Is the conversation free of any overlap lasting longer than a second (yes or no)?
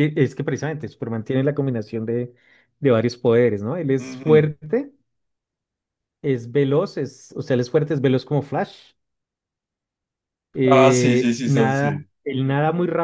no